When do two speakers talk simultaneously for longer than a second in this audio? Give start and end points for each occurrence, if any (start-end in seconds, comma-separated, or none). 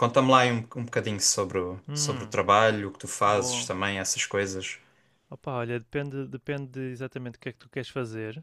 none